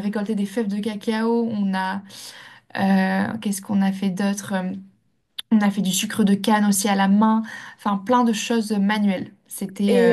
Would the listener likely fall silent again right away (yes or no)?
no